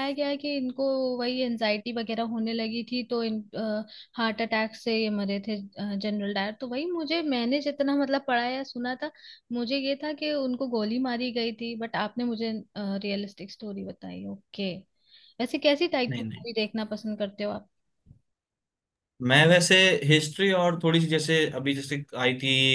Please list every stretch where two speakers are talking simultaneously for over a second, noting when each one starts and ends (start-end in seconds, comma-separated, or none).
none